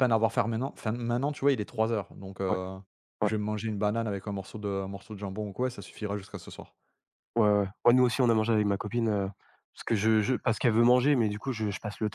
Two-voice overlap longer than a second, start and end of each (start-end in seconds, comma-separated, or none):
none